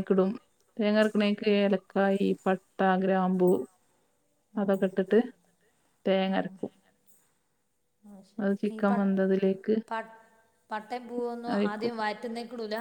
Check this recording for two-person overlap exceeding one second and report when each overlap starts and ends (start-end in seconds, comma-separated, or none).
none